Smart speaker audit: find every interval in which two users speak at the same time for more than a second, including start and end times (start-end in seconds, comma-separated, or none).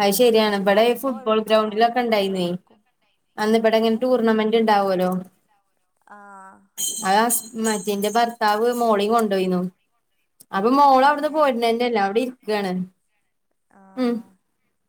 0.7-2.5